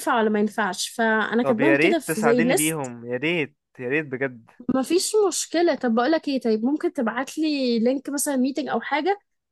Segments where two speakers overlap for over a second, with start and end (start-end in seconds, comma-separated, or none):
1.4-2.9